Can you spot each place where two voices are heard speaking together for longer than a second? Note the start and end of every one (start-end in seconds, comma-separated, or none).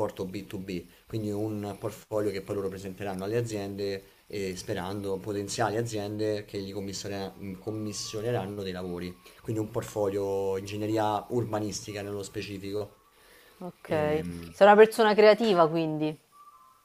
none